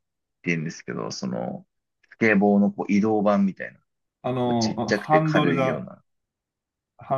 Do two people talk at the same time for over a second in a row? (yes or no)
yes